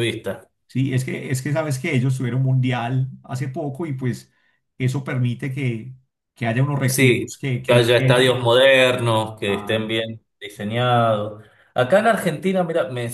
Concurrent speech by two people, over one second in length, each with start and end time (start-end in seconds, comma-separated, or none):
6.9-8.4